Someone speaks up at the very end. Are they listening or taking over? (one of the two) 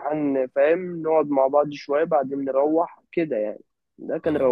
listening